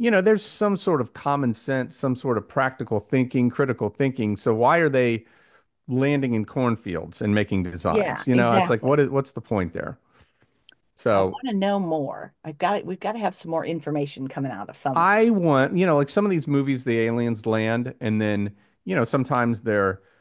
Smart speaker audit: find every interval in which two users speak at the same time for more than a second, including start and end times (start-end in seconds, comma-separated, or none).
7.9-9.1